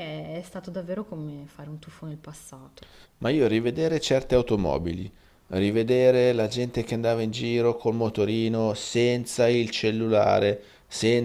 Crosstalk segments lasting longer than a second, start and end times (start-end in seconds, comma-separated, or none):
none